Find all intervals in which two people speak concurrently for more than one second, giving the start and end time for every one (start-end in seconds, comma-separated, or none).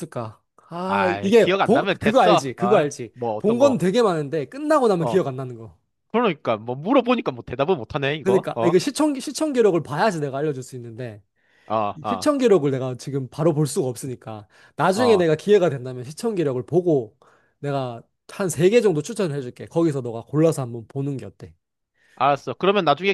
0.8-3.8